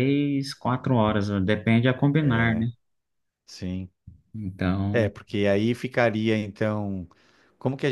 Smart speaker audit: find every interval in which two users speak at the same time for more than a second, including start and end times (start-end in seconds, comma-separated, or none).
none